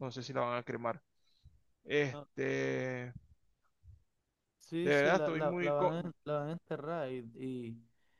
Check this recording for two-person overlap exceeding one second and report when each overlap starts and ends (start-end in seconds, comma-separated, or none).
4.8-6.1